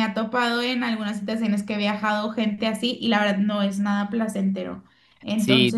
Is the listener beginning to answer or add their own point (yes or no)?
yes